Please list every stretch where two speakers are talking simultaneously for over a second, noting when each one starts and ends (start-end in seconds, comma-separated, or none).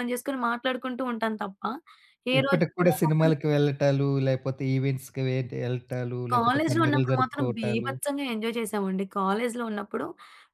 6.3-7.9